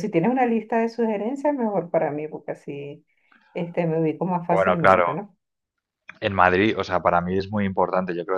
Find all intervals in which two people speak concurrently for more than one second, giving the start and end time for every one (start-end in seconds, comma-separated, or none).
none